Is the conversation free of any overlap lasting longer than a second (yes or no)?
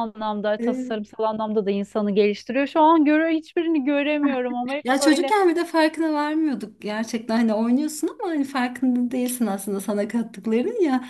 yes